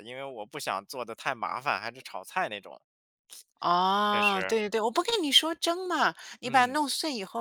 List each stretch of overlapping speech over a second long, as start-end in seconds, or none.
none